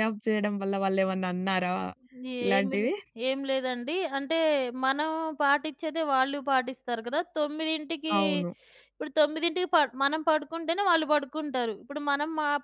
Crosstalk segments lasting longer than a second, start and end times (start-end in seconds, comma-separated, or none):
none